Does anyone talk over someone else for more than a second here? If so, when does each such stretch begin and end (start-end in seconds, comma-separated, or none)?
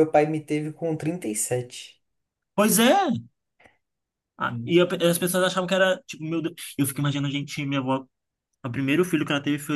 none